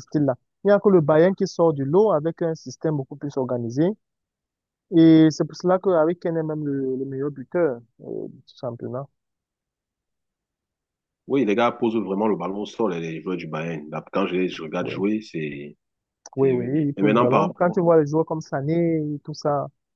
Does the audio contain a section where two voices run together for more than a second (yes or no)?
yes